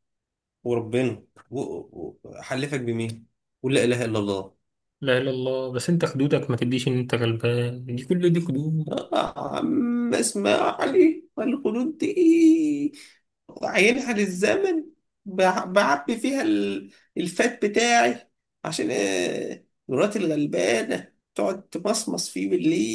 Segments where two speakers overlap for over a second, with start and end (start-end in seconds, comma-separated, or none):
none